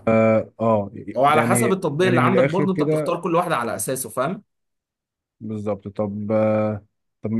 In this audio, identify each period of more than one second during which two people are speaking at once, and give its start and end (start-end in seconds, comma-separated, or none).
1.4-3.2